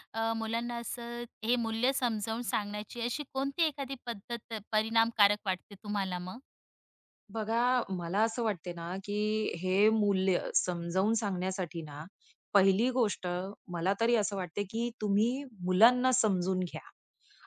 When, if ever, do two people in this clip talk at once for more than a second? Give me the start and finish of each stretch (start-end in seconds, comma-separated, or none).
none